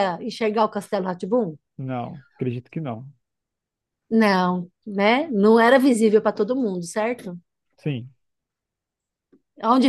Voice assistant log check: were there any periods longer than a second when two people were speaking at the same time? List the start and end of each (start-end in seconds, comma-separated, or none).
none